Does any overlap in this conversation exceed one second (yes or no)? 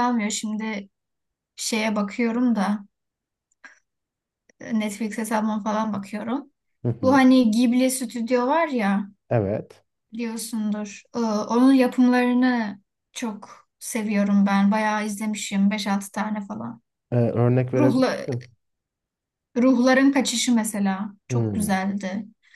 no